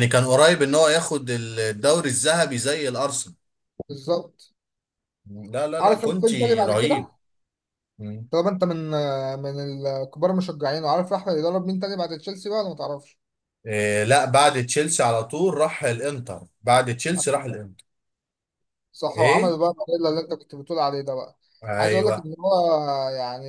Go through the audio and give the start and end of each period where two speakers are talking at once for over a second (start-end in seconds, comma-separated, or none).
5.8-7.1